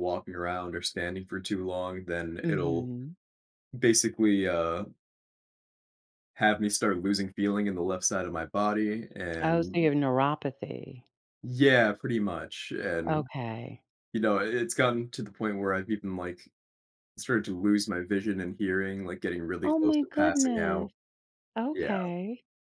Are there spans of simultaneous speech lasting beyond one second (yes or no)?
yes